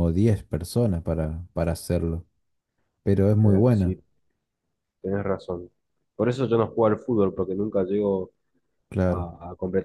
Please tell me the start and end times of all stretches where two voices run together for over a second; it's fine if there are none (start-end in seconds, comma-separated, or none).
none